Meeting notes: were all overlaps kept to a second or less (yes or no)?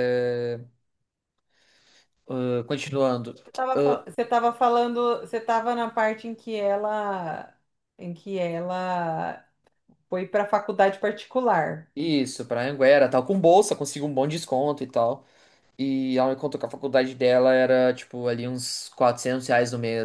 yes